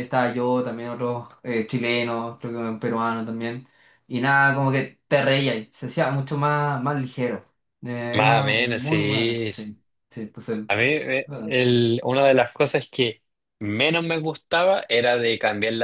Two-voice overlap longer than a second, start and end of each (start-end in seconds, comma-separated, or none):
8.1-9.5